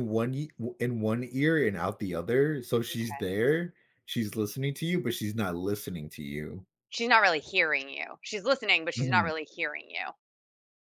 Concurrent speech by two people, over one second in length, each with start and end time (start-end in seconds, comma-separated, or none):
none